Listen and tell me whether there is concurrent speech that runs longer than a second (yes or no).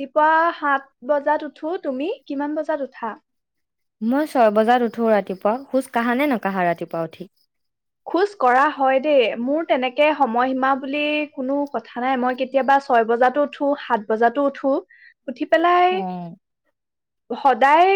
no